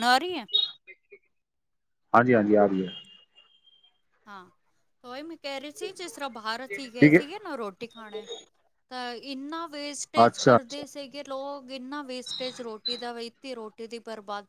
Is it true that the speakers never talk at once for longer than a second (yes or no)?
yes